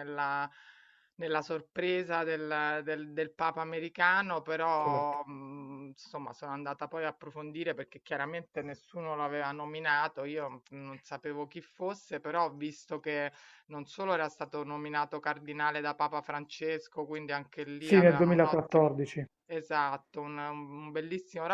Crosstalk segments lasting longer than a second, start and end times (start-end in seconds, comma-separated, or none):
17.8-19.0